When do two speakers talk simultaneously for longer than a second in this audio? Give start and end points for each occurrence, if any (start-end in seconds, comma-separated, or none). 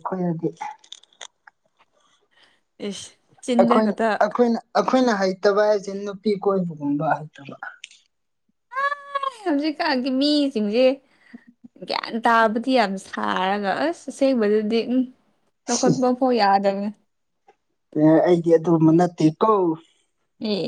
none